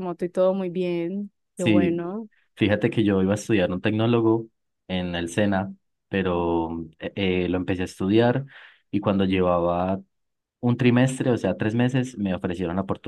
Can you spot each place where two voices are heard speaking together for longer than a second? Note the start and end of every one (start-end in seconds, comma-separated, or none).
none